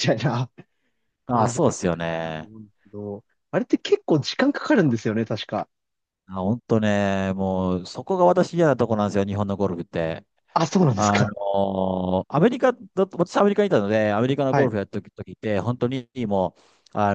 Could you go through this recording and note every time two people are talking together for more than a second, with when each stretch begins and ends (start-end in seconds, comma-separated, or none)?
1.3-2.5